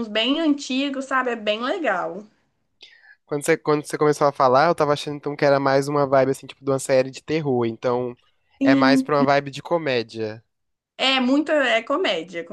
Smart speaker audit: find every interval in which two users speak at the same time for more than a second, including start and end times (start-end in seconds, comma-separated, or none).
none